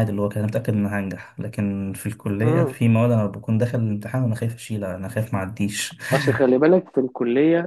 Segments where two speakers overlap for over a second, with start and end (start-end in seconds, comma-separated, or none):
none